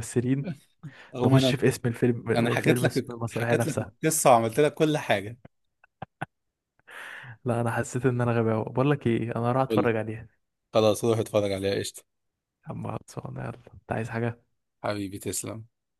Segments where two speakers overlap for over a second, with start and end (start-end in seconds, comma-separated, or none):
2.4-3.9